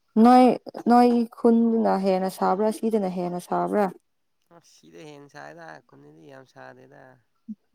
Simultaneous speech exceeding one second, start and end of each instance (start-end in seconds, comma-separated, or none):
none